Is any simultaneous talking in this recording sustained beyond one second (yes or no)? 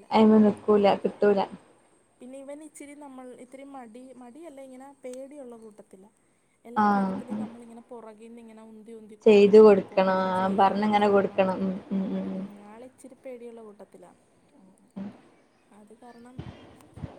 yes